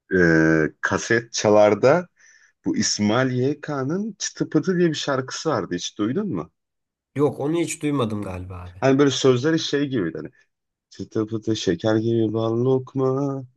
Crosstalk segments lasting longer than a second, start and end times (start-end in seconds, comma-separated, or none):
none